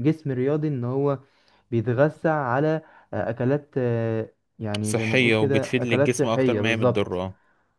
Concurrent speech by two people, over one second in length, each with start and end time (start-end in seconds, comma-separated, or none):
4.8-7.2